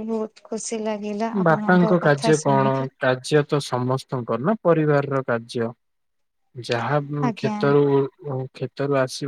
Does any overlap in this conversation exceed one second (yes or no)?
yes